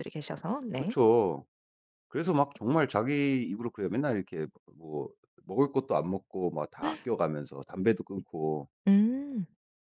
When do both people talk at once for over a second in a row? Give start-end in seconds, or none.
none